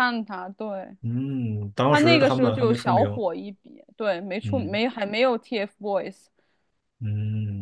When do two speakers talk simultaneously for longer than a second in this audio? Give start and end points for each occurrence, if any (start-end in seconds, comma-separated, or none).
1.9-3.2